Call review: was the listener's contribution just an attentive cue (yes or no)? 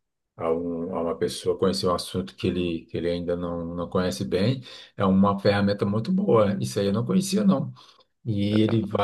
yes